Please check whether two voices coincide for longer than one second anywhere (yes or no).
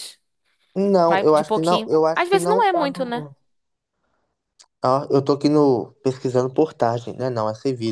yes